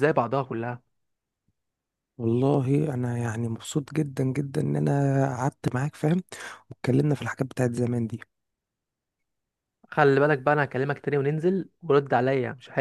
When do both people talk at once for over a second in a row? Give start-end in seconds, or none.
none